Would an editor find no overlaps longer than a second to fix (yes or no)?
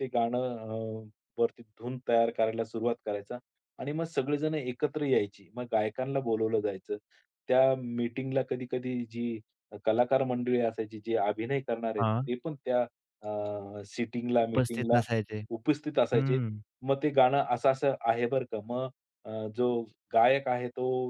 yes